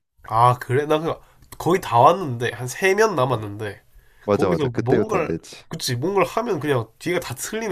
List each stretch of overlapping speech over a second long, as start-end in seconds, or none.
4.3-5.6